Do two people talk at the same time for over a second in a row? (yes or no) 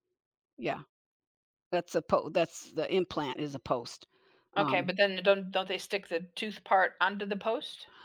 no